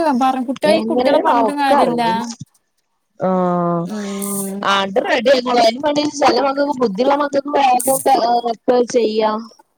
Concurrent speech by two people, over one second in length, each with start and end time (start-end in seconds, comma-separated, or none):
0.8-2.0